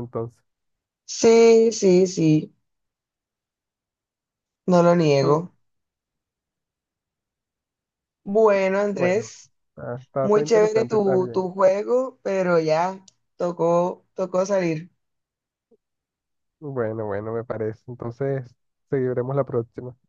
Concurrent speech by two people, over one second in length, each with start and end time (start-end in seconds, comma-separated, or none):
10.2-11.4